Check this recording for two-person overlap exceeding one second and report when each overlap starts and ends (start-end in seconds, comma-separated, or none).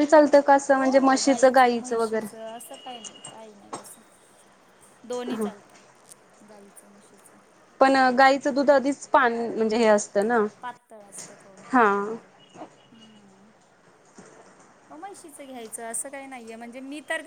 0.8-2.3